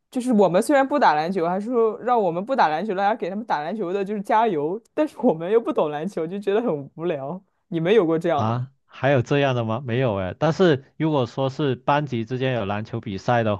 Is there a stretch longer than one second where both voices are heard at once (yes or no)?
no